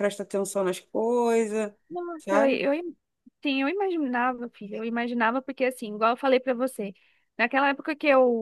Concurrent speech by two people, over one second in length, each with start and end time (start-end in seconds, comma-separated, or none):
none